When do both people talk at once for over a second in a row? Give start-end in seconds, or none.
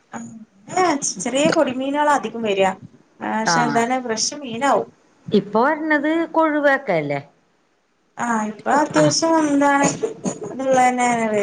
none